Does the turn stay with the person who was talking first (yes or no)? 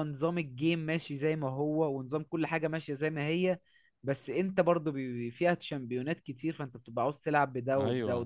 yes